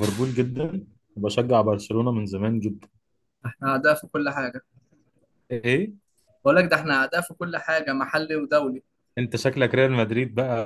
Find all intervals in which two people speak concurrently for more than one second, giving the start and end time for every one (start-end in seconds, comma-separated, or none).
none